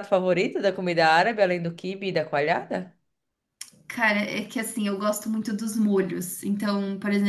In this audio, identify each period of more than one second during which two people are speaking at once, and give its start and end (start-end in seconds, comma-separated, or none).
none